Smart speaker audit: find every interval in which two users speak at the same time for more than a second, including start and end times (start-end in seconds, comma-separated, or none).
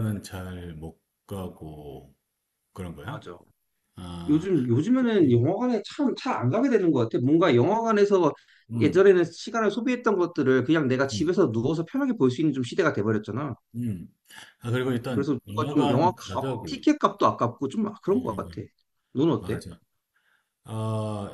15.1-16.9